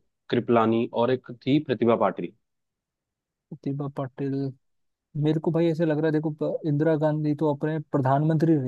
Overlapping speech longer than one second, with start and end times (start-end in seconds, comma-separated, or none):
none